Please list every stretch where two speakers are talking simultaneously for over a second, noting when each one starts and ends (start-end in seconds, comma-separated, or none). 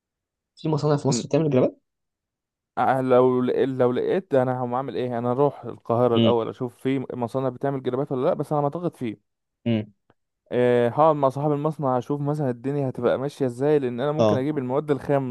none